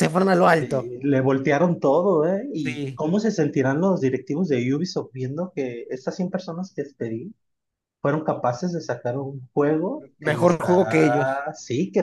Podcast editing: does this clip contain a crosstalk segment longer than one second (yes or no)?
yes